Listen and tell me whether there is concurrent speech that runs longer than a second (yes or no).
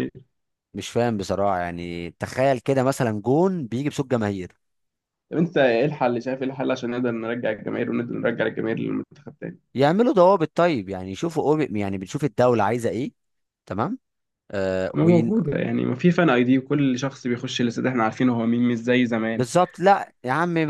no